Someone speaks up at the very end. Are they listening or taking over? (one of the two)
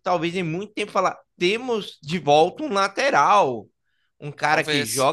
listening